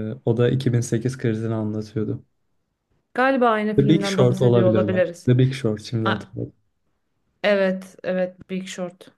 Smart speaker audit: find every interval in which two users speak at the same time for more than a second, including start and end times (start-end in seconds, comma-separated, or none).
3.8-5.3